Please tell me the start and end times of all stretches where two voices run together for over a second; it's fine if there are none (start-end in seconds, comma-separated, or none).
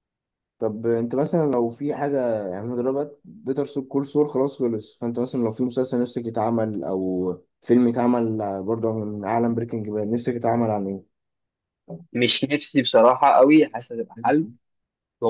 none